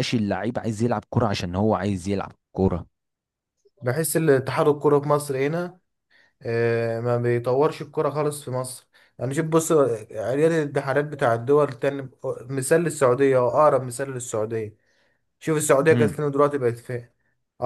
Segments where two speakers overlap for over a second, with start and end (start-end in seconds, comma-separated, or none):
none